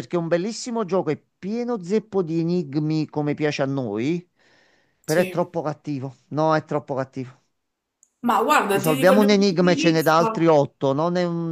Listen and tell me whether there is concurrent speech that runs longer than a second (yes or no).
yes